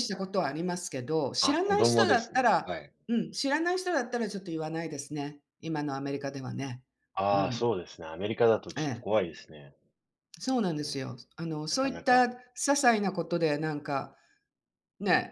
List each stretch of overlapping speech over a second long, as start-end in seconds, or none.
1.4-2.7